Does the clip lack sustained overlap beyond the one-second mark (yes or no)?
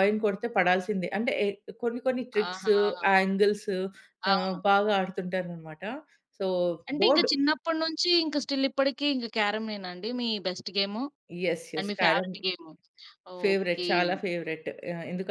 yes